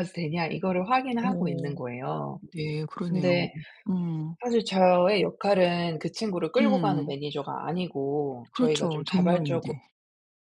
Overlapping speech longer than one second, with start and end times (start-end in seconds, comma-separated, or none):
8.5-9.7